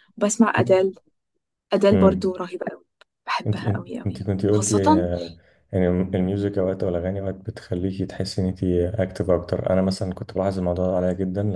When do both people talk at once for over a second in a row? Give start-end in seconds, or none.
3.5-5.1